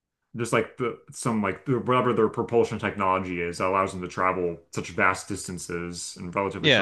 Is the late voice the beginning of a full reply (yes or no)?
yes